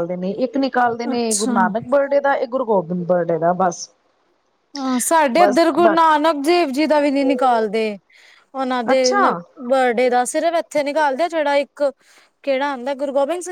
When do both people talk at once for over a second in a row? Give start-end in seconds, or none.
none